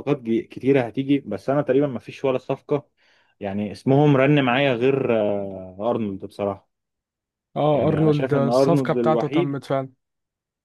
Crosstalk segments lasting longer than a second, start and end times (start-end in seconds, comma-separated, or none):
7.7-9.6